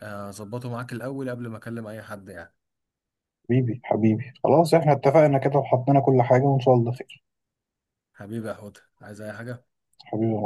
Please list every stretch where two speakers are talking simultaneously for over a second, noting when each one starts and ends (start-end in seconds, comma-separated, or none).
none